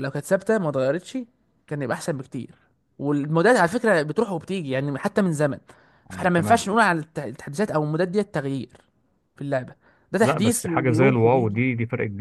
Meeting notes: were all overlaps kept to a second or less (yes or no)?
no